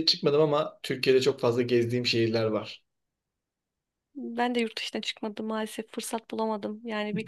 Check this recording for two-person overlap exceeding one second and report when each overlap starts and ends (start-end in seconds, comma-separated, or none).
none